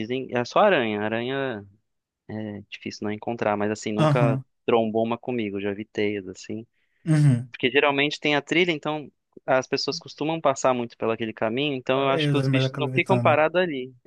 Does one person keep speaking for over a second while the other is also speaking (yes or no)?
yes